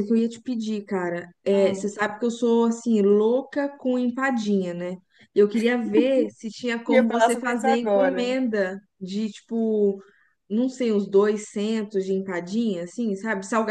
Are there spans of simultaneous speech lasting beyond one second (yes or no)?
yes